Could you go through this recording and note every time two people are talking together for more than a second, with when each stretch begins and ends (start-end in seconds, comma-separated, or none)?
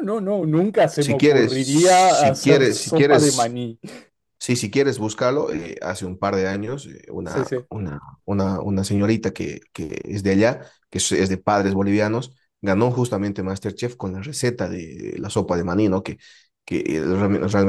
1.0-3.6